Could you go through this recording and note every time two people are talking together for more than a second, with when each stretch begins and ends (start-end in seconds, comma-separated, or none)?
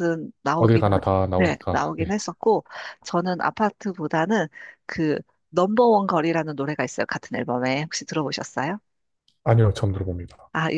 0.6-2.1